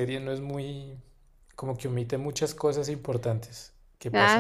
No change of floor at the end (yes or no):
no